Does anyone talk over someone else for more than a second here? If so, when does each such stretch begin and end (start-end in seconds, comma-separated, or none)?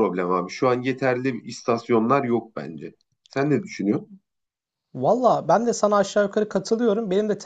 none